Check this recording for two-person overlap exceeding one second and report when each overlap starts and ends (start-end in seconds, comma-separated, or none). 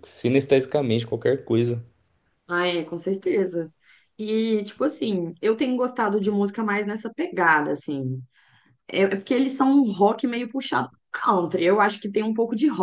none